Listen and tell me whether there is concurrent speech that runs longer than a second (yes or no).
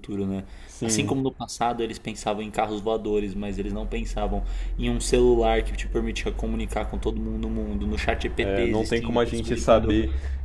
yes